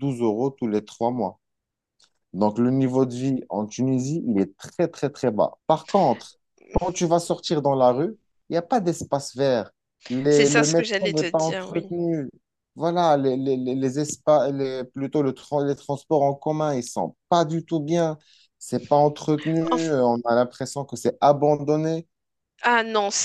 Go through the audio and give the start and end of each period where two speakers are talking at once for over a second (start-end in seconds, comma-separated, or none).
10.3-11.9